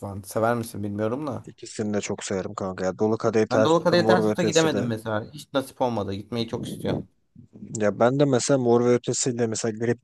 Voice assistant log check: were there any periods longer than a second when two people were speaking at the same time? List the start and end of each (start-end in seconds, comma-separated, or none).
3.5-4.9